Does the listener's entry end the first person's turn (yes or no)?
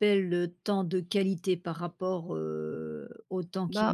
yes